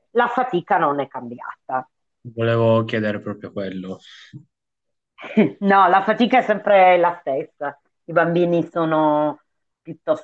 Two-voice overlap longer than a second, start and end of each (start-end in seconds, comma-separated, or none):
none